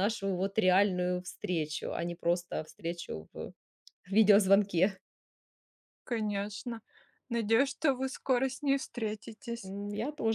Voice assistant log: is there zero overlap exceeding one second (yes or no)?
yes